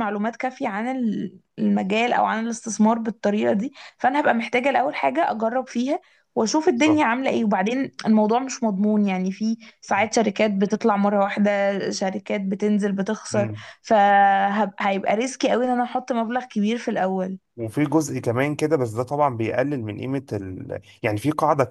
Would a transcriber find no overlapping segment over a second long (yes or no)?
yes